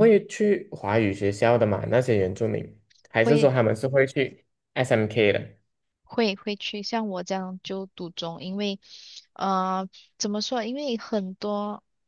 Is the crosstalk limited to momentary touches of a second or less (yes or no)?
yes